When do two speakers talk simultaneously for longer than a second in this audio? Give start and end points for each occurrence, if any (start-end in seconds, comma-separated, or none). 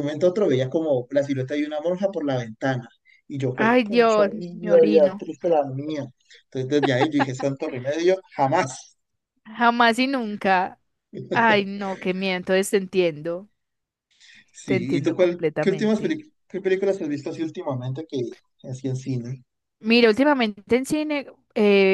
3.5-5.2, 14.7-16.2